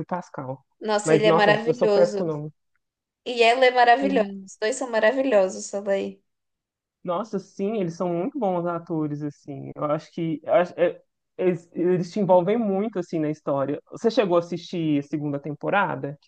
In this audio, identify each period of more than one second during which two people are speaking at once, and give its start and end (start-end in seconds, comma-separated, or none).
1.0-2.3